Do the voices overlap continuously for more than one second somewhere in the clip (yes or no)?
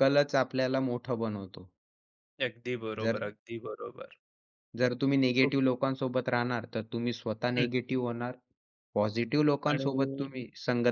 no